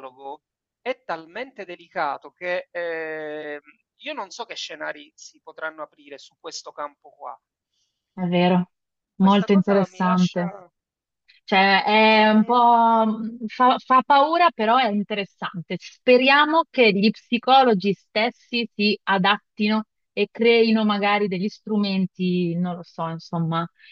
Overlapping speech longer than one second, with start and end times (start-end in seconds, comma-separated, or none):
9.2-10.5